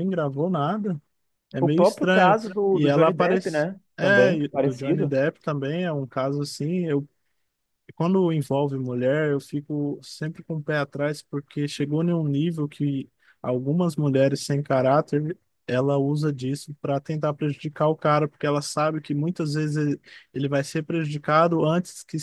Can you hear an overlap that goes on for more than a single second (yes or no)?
yes